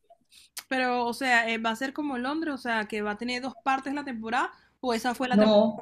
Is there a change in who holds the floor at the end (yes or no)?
yes